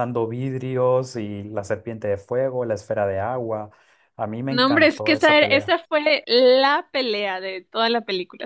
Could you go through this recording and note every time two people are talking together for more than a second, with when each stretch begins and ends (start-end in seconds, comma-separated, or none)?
4.5-5.7